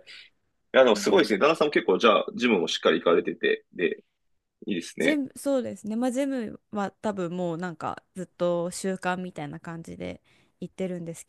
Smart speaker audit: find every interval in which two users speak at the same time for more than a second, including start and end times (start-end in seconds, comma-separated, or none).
none